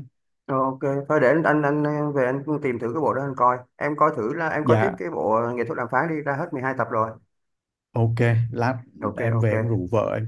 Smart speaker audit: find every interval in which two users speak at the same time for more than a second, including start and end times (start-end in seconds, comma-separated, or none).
none